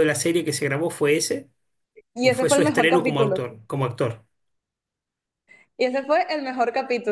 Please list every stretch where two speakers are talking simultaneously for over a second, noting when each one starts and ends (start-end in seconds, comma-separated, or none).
2.2-3.4